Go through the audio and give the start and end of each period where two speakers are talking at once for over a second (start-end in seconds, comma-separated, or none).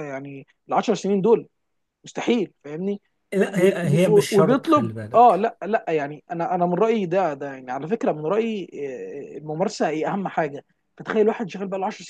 3.5-5.4